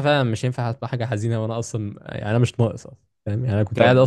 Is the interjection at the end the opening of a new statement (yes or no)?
yes